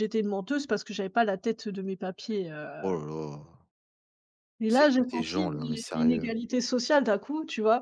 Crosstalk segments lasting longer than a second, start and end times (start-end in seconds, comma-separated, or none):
4.7-6.3